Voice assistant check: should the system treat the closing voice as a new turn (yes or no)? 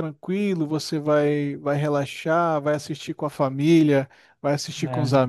no